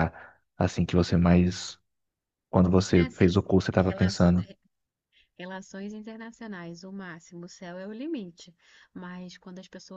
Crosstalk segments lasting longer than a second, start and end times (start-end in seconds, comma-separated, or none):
2.9-4.3